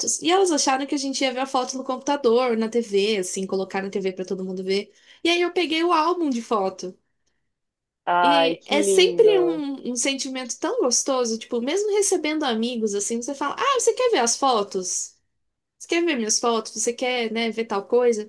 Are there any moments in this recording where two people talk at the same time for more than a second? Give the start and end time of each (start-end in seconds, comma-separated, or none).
8.2-9.6